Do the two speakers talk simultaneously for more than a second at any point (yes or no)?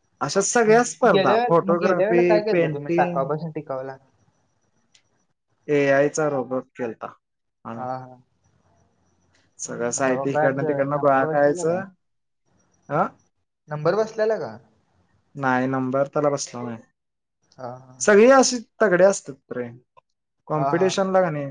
yes